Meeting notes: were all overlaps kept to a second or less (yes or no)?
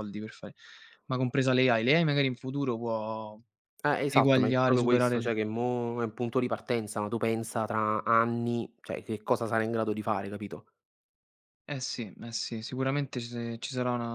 no